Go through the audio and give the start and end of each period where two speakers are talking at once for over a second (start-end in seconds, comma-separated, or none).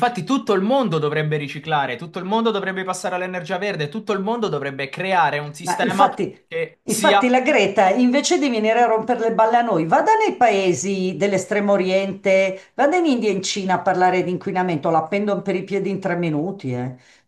none